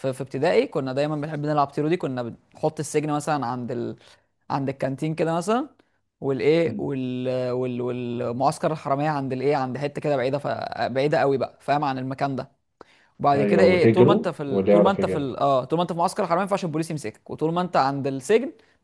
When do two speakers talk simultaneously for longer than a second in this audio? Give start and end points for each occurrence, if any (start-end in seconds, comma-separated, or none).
13.3-15.4